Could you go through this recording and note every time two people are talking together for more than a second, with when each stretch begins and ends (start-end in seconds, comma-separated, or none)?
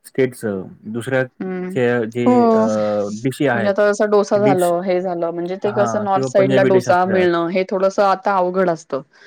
5.7-7.2